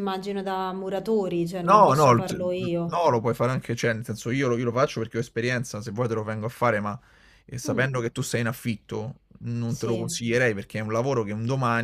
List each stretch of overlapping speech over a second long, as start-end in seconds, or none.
1.6-3.0